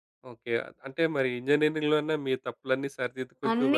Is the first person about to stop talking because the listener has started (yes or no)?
yes